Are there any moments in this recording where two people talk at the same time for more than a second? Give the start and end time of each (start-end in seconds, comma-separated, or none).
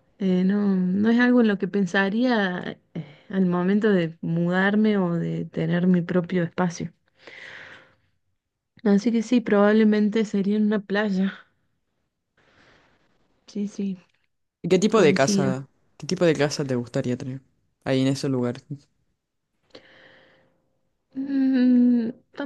none